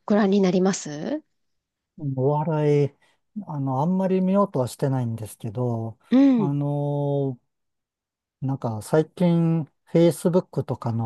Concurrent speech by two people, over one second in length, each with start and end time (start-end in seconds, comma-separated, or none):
none